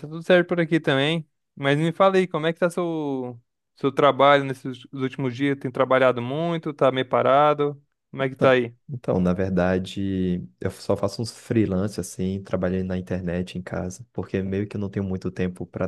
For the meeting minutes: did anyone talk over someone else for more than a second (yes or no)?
no